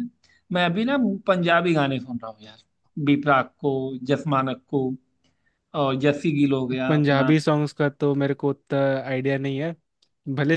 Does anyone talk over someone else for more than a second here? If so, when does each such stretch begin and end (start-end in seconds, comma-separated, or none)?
none